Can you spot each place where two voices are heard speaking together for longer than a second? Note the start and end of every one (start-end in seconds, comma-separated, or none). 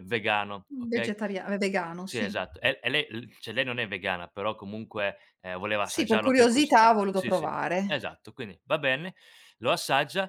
5.8-8.2